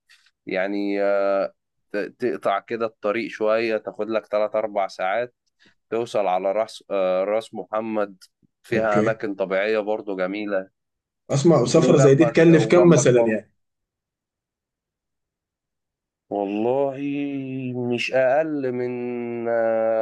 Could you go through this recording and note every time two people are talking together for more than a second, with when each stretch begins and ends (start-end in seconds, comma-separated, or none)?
11.8-13.4